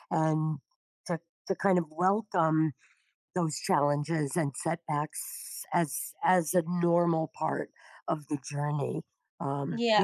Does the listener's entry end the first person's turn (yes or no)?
yes